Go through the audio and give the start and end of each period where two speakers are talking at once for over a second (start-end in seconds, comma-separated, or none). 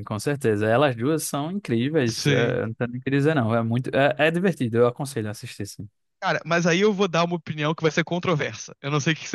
none